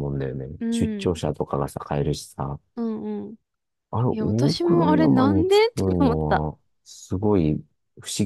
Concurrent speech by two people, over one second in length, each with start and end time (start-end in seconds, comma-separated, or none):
4.1-6.5